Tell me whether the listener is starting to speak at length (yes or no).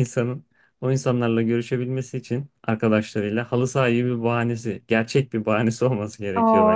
yes